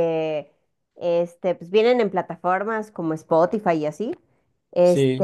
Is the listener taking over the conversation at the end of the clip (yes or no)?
no